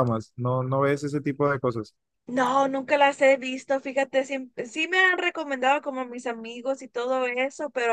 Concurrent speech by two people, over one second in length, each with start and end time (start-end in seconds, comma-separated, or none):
none